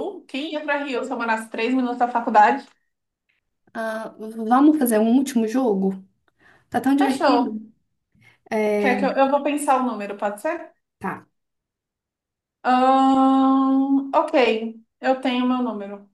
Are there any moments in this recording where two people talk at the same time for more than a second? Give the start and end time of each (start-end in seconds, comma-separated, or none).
none